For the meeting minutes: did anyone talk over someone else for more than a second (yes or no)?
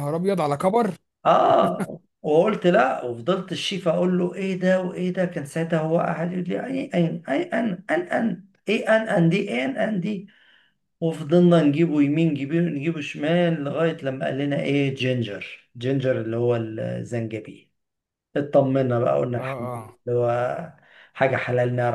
no